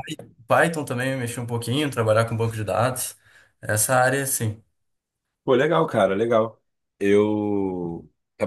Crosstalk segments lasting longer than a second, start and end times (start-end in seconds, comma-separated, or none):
none